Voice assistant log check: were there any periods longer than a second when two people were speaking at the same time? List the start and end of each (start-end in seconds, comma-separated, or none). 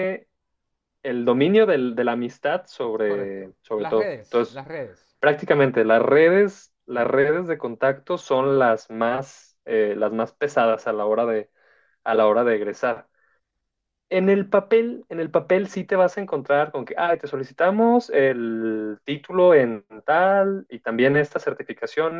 3.0-4.6